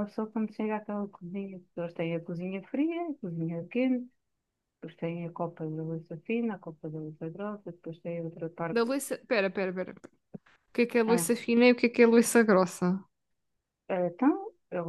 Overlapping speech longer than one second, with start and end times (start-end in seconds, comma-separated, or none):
none